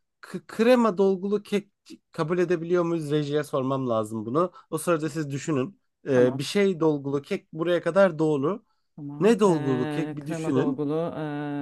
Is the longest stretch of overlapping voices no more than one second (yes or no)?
no